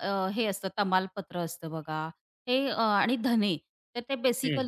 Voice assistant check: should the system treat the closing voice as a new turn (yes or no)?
no